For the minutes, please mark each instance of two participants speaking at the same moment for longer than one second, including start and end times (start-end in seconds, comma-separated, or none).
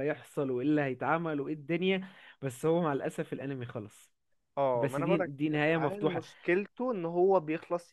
4.7-6.2